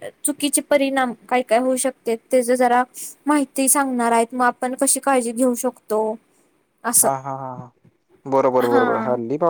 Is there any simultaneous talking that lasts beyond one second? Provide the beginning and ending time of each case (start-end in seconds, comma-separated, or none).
none